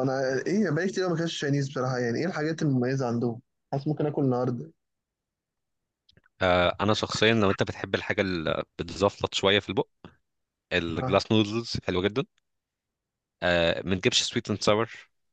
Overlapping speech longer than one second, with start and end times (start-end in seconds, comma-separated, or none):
none